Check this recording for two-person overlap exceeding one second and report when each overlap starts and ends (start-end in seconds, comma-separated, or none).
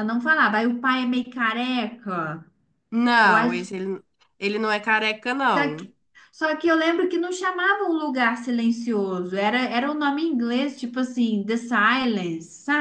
none